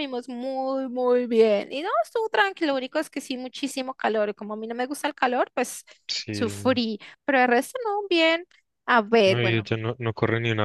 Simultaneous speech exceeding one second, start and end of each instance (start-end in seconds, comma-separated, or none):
none